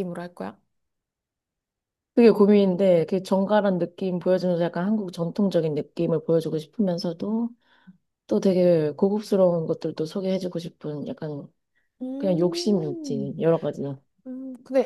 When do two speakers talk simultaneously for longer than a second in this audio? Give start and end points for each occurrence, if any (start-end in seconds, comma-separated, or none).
12.2-13.4